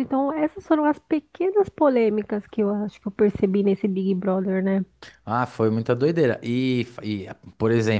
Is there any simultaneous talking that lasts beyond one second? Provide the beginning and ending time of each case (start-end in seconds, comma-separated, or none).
none